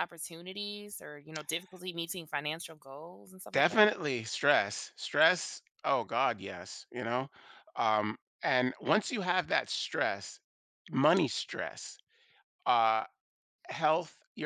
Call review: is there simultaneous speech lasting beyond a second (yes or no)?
no